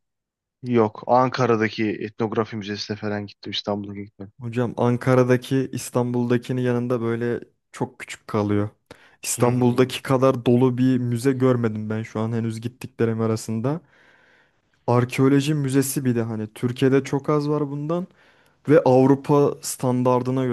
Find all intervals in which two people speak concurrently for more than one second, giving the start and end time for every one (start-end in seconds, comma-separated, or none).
none